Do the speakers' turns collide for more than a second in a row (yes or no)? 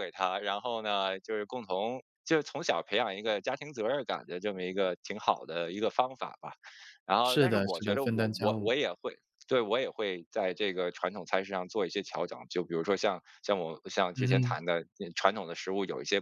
yes